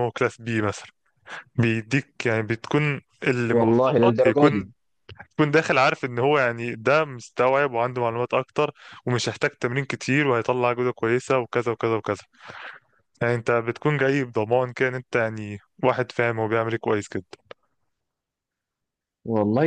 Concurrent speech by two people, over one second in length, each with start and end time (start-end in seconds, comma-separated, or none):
3.5-4.7